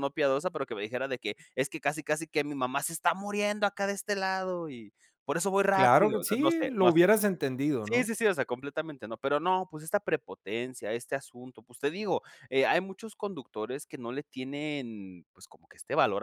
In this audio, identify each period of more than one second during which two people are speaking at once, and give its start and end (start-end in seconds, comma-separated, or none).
5.7-7.1